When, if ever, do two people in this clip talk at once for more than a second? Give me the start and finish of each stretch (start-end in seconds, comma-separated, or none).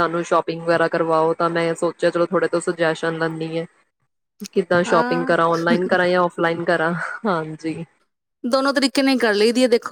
none